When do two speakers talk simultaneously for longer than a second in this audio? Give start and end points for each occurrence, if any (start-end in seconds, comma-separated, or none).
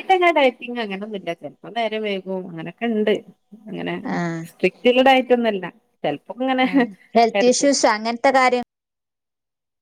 none